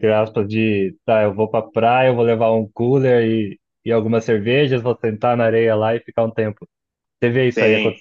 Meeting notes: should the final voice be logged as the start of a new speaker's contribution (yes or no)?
yes